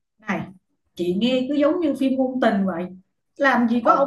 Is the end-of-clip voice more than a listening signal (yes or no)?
no